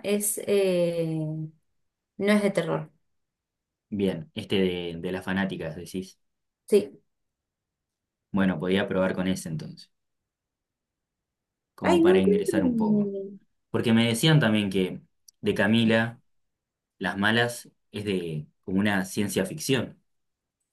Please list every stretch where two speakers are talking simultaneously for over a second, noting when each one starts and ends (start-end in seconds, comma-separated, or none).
11.8-13.1